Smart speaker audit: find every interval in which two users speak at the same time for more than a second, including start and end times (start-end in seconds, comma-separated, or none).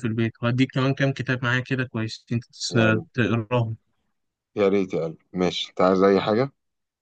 none